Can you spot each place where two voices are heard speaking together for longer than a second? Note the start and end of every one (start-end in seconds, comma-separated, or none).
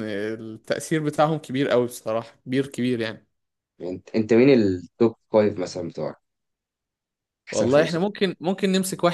none